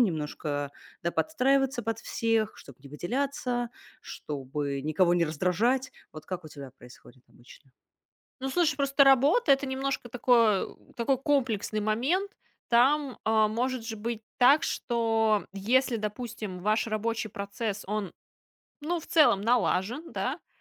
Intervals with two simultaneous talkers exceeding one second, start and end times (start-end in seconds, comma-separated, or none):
none